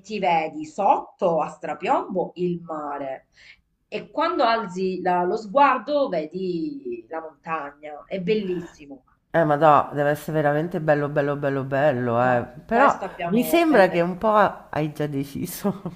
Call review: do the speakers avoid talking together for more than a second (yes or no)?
no